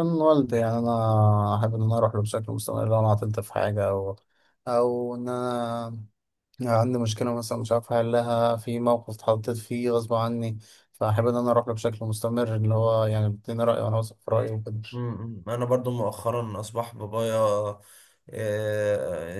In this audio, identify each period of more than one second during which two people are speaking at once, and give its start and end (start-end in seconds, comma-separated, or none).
none